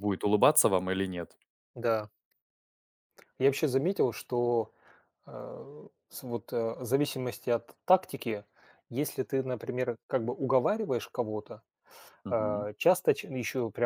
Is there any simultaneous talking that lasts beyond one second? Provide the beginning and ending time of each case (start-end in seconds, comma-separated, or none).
none